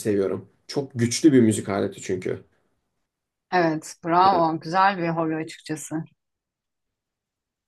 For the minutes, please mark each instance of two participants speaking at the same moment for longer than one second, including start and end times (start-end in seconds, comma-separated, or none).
none